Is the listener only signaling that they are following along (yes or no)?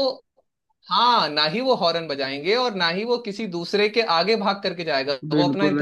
no